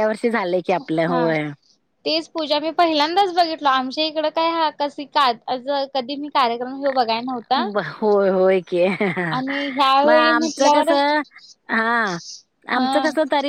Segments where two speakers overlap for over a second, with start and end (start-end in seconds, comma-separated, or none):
9.3-10.9